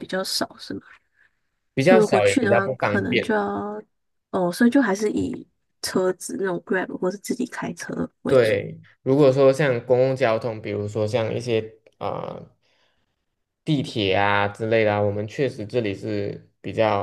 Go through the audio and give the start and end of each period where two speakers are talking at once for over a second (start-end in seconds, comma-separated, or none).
1.8-3.3